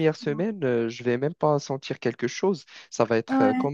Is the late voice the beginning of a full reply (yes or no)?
no